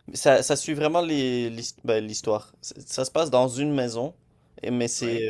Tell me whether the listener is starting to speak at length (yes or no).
no